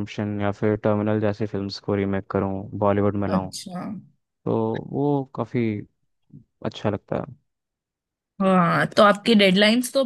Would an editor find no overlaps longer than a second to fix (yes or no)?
yes